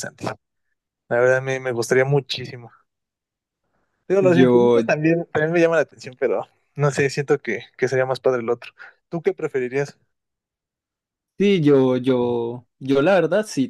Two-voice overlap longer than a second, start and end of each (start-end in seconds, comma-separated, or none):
none